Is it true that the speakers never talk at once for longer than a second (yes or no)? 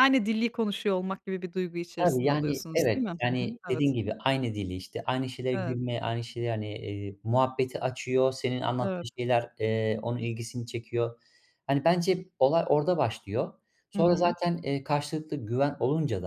no